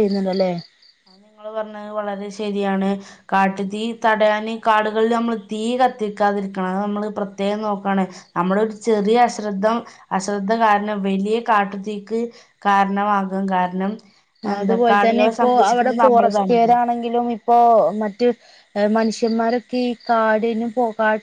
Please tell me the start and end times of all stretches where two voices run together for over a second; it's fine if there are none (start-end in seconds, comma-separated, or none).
14.6-16.8